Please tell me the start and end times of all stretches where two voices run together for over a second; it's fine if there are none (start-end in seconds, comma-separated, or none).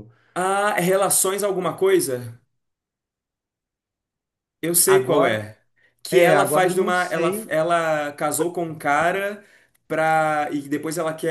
6.1-7.5